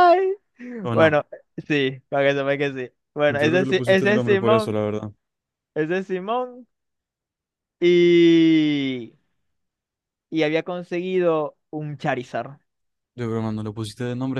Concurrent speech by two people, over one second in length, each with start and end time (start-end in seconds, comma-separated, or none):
3.3-4.8